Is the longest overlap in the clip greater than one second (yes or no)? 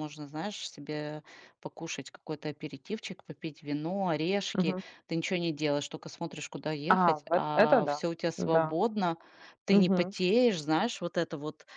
yes